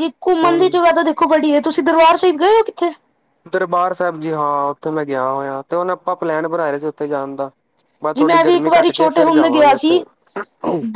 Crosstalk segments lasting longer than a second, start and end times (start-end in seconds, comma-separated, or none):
8.2-10.0